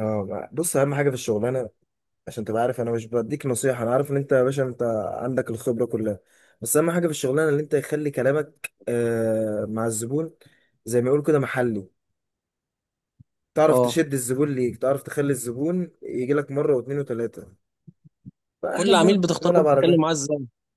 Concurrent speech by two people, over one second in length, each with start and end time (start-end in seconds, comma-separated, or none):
18.7-20.1